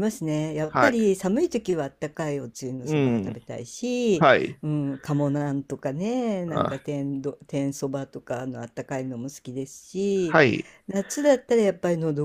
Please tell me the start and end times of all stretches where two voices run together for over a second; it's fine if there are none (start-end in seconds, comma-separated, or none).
none